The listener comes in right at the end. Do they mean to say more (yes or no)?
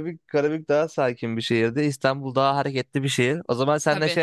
no